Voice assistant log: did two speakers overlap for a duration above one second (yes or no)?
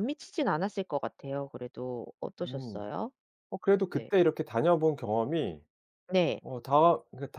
no